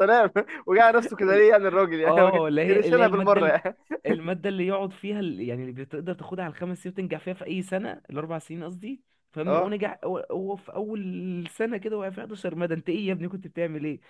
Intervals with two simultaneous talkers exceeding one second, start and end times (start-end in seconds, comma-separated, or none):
2.0-3.6